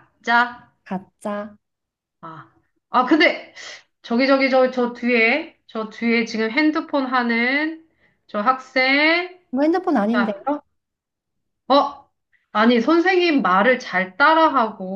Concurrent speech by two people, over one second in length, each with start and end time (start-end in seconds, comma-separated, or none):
none